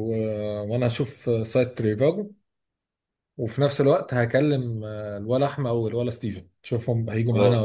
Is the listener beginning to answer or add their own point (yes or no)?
yes